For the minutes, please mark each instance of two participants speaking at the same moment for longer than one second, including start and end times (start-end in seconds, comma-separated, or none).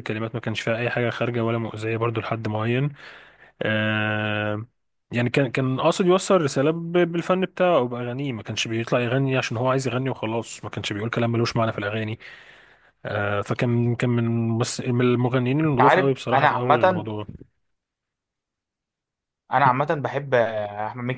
15.7-17.1